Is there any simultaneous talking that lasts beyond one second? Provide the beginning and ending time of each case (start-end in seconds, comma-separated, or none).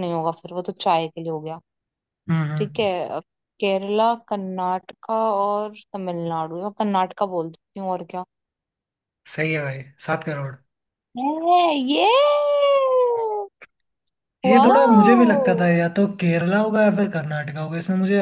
14.4-15.7